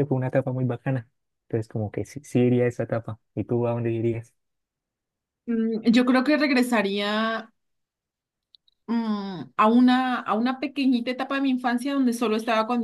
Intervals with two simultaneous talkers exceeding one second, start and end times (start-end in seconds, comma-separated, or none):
none